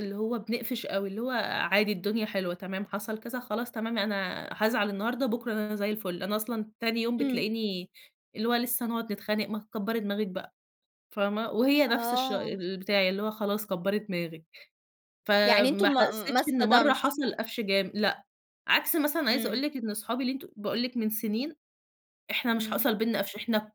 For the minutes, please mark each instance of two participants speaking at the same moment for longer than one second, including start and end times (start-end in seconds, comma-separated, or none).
15.4-17.1